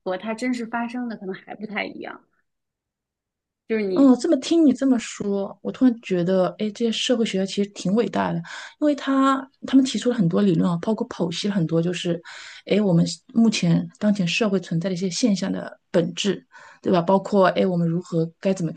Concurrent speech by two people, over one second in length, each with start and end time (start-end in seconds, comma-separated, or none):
none